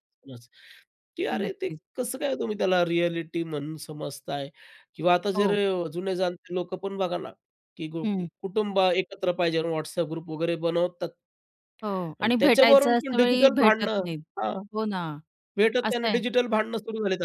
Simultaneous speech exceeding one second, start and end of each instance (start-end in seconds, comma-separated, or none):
12.2-14.1